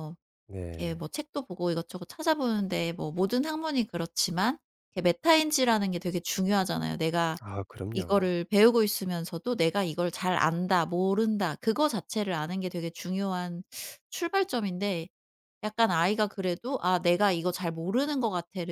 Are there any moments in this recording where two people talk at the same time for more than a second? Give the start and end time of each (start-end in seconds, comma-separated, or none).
none